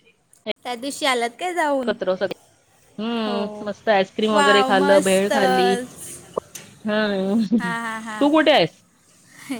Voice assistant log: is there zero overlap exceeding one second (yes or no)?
no